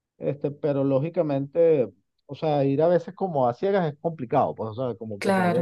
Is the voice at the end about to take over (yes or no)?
no